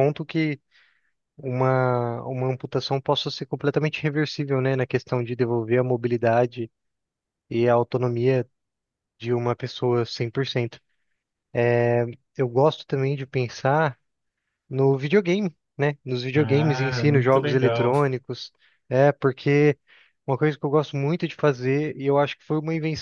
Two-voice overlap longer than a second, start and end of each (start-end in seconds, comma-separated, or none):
16.3-17.9